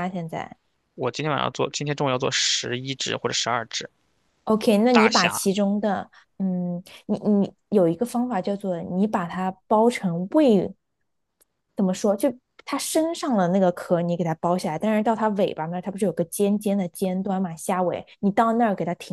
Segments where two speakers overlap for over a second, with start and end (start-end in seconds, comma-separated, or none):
none